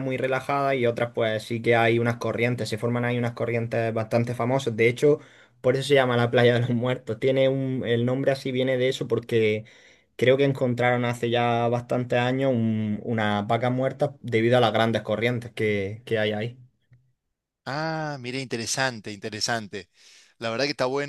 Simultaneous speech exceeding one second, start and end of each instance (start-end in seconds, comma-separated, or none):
none